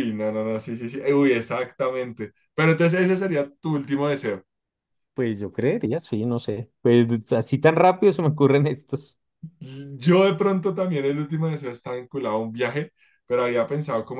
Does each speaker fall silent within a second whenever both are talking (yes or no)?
yes